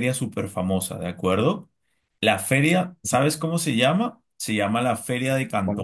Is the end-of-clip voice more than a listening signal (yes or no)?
no